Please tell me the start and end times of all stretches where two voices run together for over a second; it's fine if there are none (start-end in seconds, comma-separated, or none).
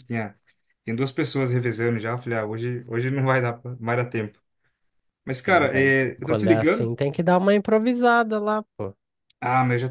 5.5-6.9